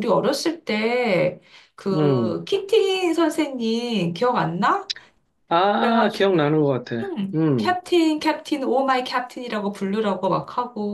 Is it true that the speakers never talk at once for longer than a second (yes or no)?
no